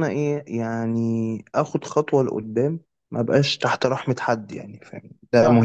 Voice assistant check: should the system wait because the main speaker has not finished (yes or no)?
no